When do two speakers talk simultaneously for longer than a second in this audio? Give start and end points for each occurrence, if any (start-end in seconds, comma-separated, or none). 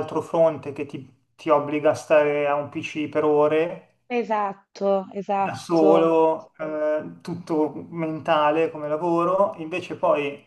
none